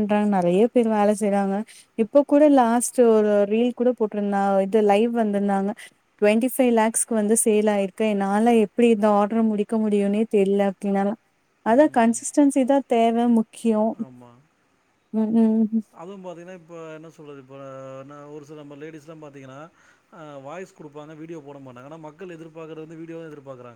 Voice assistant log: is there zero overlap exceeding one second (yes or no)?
yes